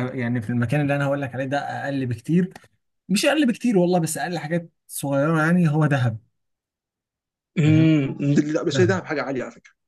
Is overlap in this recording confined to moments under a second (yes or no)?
yes